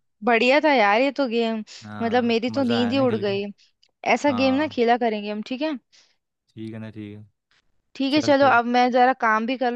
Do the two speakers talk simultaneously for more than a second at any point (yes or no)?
yes